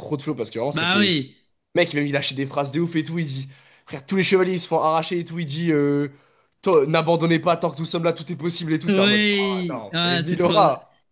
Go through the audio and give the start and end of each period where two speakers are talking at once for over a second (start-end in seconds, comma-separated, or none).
8.9-10.5